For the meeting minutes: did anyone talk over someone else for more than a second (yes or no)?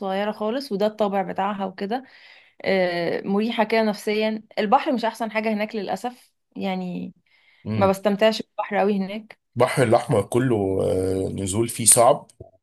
no